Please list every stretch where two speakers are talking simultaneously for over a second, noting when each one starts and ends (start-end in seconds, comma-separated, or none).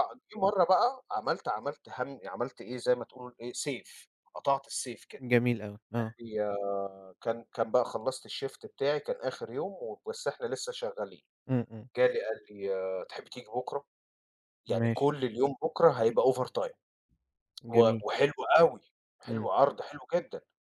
none